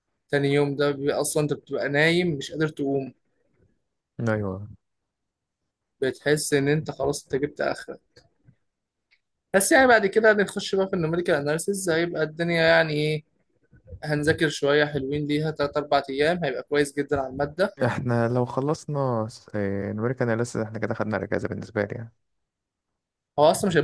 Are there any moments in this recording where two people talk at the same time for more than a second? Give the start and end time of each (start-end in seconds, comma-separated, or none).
none